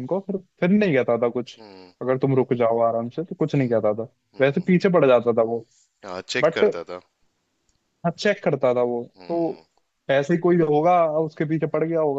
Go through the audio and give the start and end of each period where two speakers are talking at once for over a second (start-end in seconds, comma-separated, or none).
none